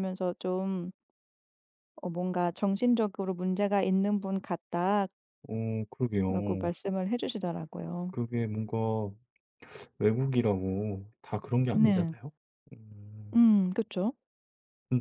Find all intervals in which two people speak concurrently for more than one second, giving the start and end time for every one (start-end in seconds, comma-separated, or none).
none